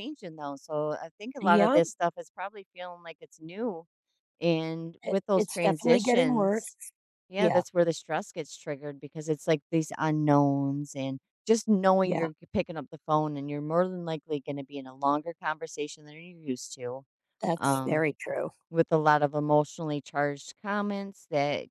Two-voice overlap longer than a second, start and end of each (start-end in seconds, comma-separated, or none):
5.0-6.7